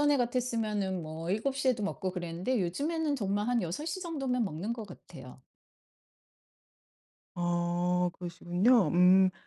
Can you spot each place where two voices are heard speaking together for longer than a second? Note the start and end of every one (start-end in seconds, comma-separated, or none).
none